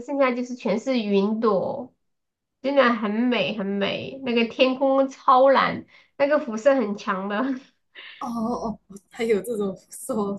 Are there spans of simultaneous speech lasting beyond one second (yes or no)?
no